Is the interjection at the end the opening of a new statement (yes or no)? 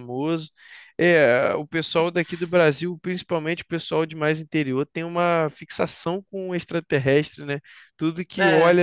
no